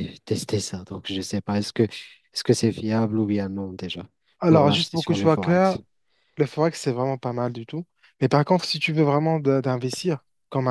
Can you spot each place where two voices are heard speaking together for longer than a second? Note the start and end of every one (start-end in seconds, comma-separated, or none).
4.5-5.8